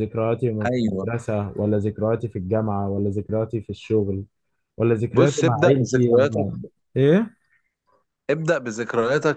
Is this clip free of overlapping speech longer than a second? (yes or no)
no